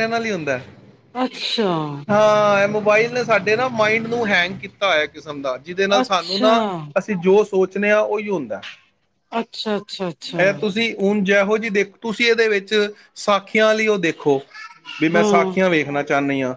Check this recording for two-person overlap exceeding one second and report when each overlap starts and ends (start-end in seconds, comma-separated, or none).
none